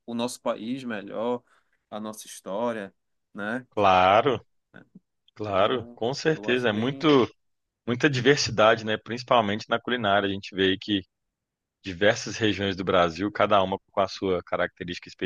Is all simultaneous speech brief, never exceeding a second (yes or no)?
no